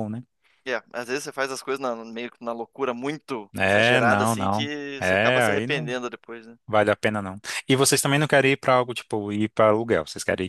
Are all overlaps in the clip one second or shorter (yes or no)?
no